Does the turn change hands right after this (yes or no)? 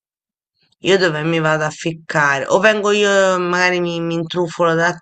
yes